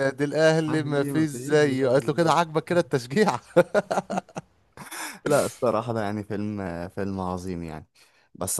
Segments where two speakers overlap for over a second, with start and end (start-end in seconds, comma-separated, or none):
0.7-2.4